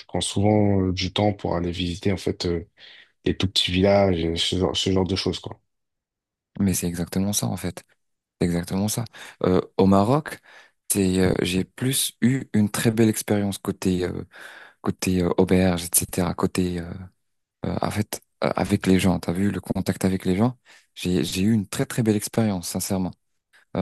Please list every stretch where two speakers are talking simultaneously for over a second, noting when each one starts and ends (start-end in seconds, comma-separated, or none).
none